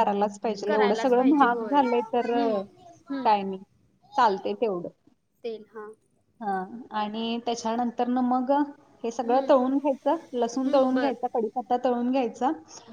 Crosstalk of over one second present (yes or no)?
yes